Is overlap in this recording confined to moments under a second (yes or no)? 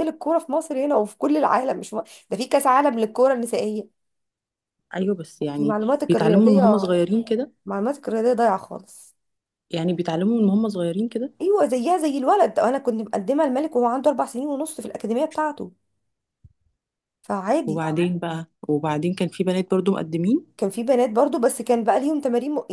no